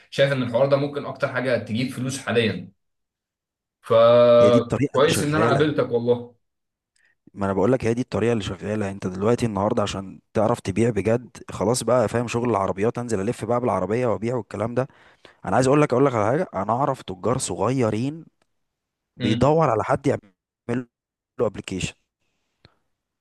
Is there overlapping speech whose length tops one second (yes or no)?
yes